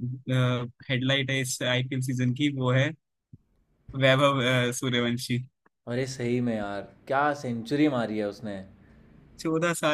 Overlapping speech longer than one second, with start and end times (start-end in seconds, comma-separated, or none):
none